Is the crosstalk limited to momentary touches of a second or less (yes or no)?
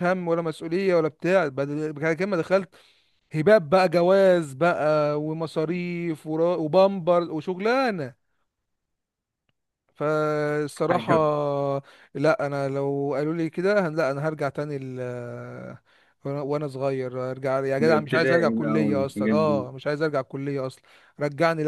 no